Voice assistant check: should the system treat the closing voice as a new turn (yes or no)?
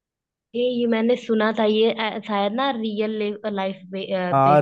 yes